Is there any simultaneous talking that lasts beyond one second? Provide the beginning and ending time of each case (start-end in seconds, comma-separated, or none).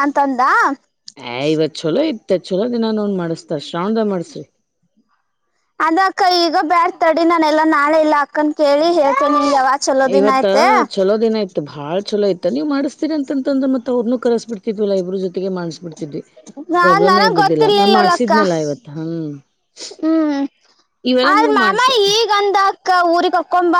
16.8-18.3